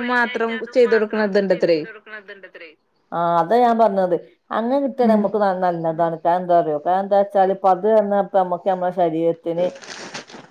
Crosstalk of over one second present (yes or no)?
no